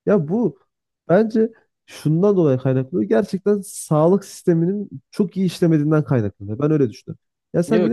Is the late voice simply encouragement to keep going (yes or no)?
yes